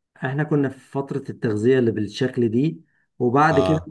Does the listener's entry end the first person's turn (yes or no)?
no